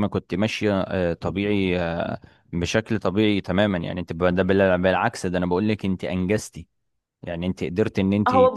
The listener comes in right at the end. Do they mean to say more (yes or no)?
yes